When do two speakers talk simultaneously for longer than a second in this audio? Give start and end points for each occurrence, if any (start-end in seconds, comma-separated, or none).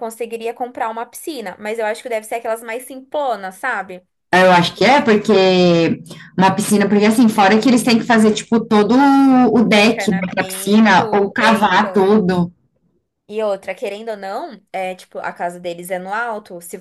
9.8-12.1